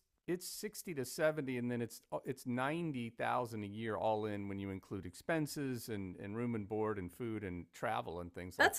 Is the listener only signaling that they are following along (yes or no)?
no